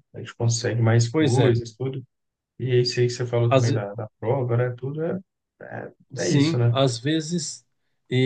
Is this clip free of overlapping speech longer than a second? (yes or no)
yes